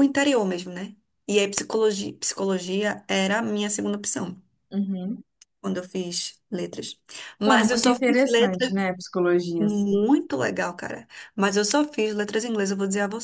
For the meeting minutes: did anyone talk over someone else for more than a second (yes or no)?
yes